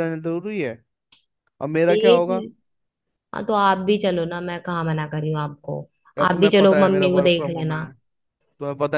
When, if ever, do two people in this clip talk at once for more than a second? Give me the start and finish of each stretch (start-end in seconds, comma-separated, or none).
6.3-7.8